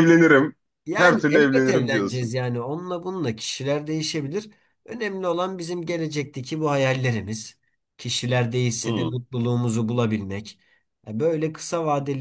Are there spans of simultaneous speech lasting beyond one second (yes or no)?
yes